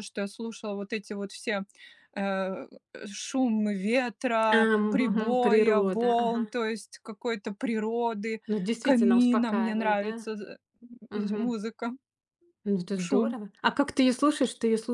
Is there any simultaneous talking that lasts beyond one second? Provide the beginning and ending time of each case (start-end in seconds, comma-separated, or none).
4.5-6.4, 8.8-10.3